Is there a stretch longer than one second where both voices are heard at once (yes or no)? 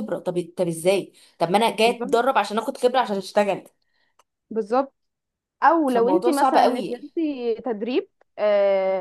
yes